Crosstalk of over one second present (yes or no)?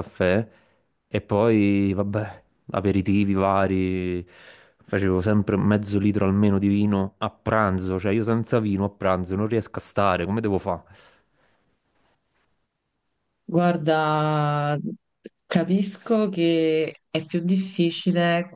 no